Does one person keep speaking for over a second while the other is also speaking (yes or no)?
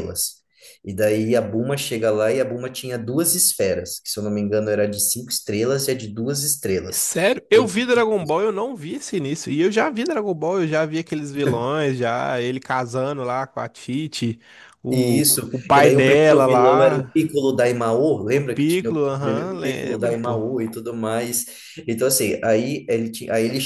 yes